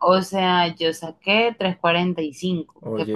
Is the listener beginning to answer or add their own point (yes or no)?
no